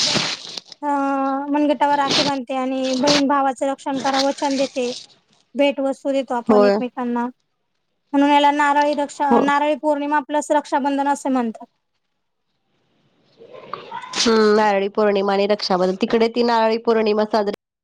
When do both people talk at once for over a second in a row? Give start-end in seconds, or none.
none